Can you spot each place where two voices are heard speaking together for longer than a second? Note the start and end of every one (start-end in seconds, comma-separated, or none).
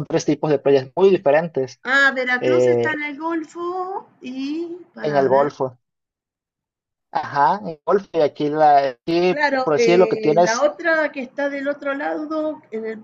9.3-10.7